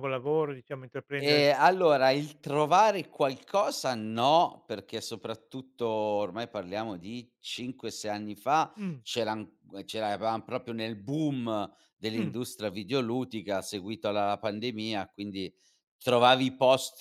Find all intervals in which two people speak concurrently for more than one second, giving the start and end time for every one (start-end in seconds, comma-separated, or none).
none